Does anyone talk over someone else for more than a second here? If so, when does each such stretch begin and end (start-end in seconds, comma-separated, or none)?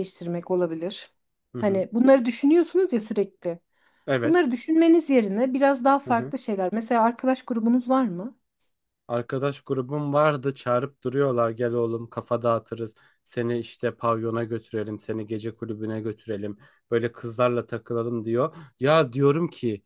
none